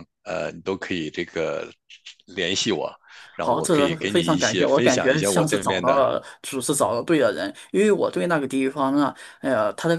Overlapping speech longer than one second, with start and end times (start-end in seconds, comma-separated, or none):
3.4-6.0